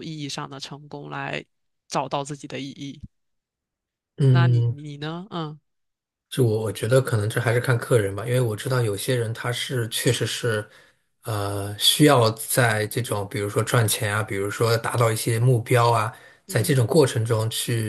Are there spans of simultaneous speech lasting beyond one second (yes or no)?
no